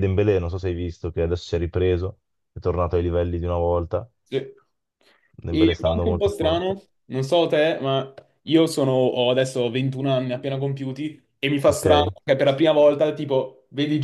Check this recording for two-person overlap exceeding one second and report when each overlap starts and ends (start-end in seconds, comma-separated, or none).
5.5-6.7